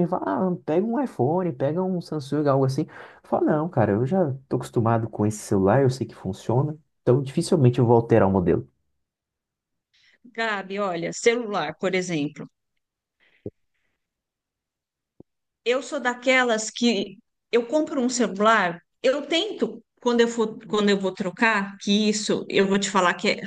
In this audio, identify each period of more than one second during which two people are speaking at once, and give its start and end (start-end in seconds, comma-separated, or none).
none